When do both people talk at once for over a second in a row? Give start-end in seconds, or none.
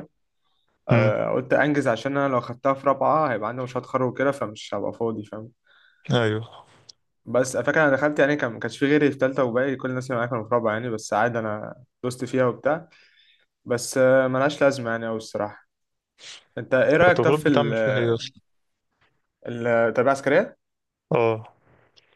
17.0-18.2